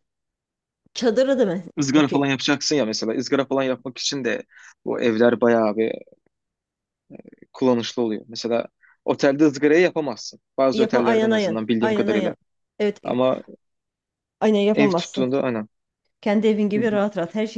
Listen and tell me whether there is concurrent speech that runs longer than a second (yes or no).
yes